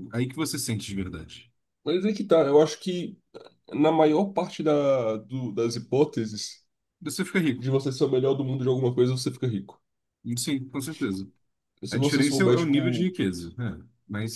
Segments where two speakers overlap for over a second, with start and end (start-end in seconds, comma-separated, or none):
11.9-13.1